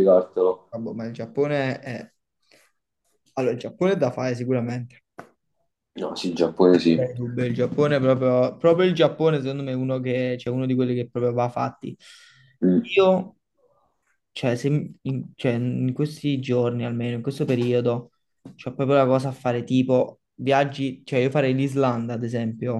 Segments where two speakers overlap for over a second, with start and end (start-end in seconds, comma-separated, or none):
none